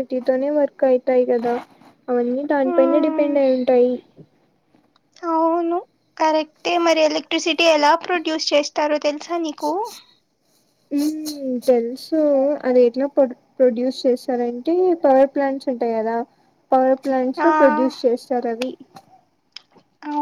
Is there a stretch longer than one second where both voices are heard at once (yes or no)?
no